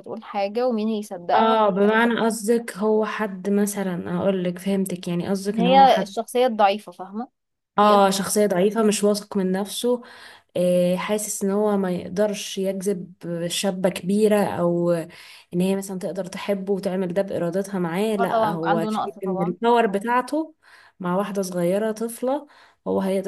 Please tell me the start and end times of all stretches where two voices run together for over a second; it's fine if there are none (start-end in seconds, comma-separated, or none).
18.2-19.6